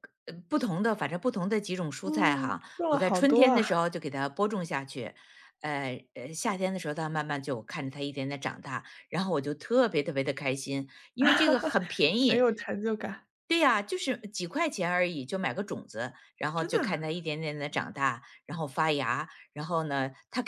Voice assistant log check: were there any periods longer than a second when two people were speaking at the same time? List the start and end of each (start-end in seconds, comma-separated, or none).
2.0-3.6